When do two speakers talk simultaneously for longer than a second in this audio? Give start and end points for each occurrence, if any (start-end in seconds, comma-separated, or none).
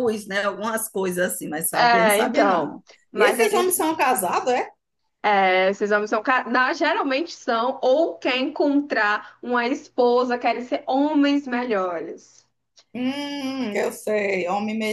1.7-3.8